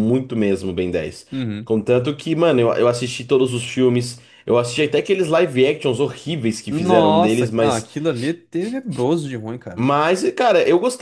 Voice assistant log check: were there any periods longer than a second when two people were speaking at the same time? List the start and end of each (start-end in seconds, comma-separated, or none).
6.7-7.9